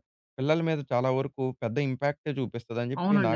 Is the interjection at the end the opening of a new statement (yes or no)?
yes